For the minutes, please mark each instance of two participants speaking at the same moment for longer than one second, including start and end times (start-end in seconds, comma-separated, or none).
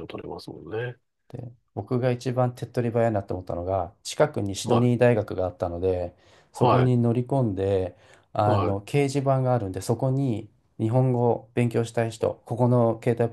none